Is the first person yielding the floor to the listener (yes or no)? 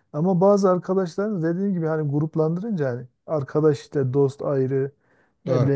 no